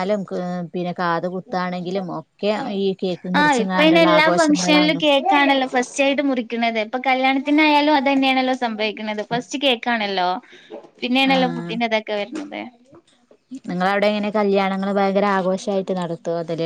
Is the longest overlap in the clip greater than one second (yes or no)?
yes